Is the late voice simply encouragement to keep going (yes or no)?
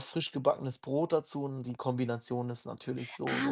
no